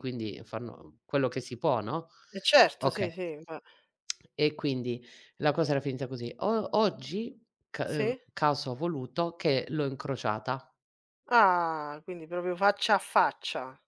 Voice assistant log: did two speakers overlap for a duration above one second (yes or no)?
no